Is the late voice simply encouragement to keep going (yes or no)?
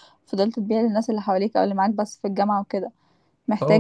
yes